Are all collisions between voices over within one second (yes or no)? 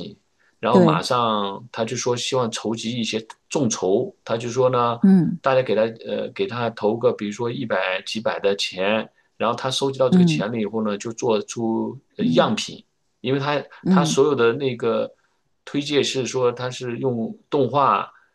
yes